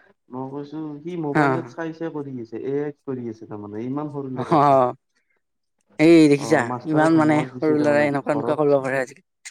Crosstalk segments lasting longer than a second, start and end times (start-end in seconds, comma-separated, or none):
6.5-8.8